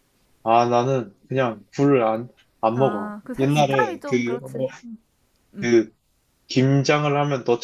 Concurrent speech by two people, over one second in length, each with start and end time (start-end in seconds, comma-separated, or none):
2.7-4.7